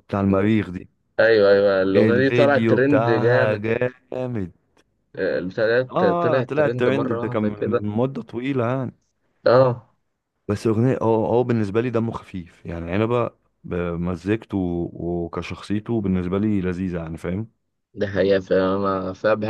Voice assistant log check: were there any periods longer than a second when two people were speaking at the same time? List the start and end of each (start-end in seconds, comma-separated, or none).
1.9-3.7, 5.9-7.8